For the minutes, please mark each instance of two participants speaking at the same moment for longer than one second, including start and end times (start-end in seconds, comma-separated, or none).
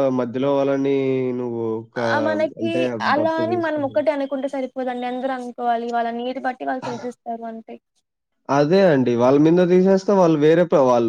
none